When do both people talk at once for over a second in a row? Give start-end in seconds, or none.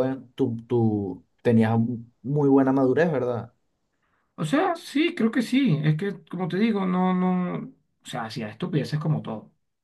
none